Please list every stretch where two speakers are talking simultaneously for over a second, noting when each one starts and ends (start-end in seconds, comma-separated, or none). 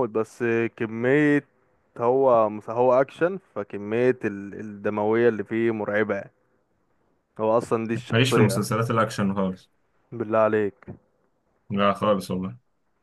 none